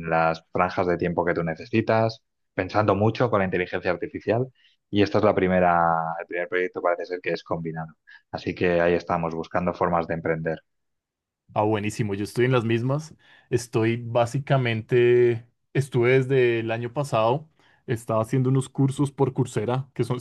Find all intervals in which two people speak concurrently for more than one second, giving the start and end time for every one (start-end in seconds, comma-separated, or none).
none